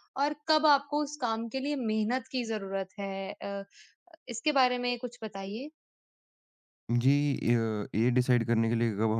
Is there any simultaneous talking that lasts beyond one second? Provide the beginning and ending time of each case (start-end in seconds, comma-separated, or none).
none